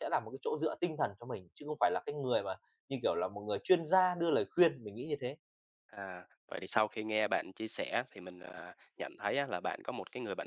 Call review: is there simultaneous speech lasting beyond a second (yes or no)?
no